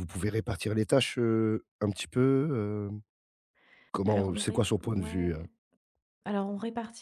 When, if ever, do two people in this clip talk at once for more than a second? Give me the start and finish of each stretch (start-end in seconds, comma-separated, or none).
4.0-5.4